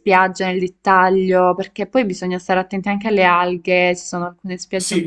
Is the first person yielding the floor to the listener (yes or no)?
yes